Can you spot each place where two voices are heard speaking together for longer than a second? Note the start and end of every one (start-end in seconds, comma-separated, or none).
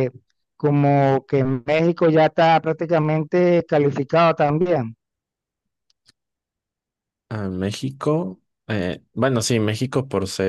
none